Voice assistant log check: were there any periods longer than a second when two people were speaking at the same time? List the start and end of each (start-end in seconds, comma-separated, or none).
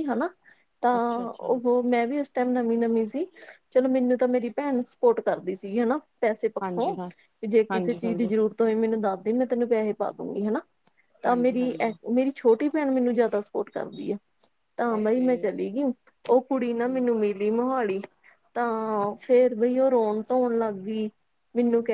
none